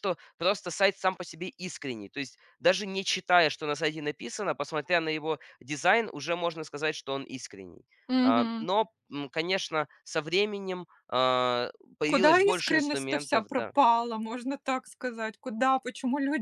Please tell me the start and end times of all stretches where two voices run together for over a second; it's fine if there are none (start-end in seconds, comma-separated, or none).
12.1-13.7